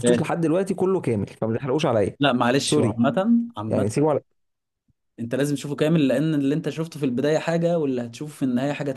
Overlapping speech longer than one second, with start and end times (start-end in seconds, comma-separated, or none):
none